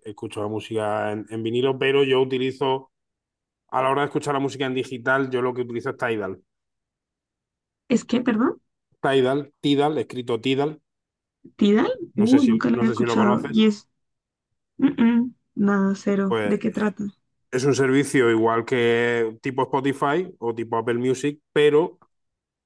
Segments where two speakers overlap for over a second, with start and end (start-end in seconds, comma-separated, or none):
12.1-13.7